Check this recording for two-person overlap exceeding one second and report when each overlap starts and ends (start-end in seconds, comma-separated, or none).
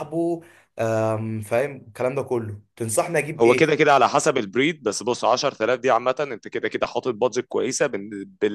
none